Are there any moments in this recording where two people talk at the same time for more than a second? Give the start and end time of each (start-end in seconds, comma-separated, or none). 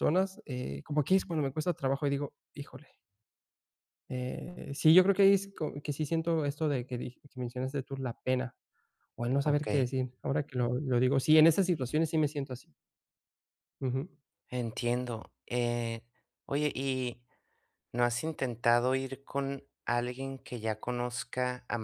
none